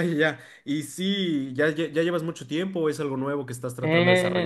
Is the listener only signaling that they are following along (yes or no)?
no